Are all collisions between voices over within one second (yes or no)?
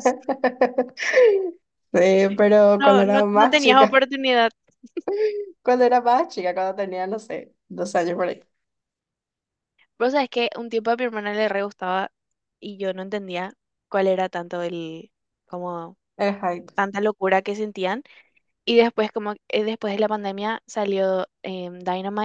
no